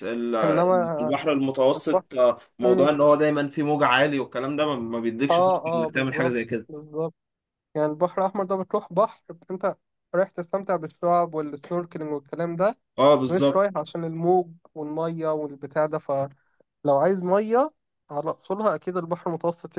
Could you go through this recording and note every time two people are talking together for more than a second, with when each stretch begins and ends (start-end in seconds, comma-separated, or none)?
5.3-6.7